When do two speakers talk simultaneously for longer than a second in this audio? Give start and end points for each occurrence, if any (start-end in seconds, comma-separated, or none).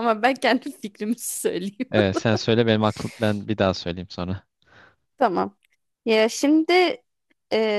none